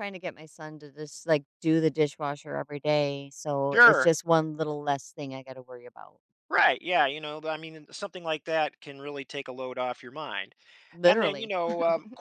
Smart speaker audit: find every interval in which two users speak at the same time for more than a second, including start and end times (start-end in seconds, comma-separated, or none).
none